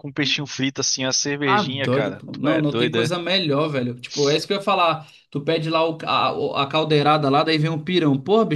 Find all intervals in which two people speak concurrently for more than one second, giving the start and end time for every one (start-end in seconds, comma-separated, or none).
1.4-3.3